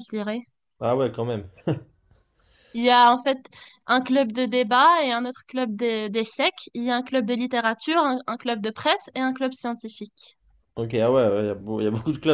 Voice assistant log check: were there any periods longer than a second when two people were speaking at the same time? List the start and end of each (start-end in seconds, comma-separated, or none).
none